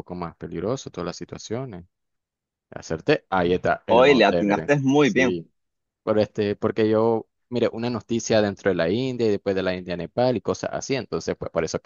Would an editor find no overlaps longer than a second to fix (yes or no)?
no